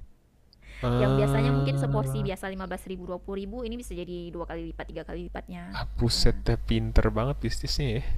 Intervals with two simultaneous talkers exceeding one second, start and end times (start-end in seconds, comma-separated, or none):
1.0-2.3